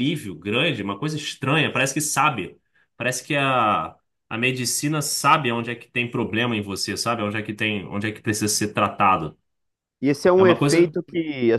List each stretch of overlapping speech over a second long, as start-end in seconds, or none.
none